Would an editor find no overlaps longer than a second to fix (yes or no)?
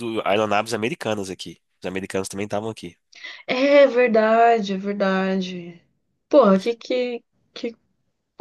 yes